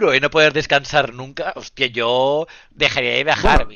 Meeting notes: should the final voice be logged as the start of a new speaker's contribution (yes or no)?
no